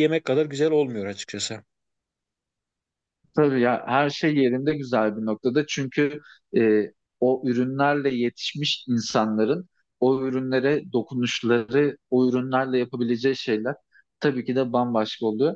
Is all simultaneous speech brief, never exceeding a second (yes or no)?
yes